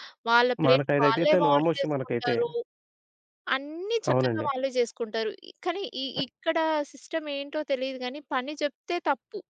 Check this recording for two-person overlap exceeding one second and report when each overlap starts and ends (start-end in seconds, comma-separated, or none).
0.7-2.4